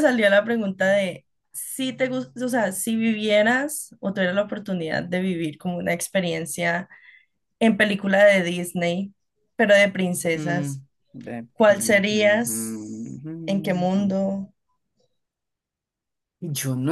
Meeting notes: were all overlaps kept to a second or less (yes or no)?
no